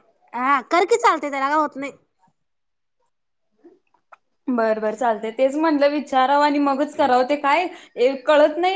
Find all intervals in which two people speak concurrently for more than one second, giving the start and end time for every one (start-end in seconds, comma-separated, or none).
none